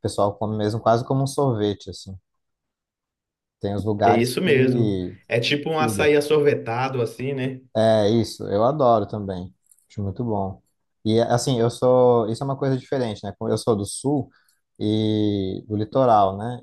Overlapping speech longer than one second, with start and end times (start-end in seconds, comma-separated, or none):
4.0-6.2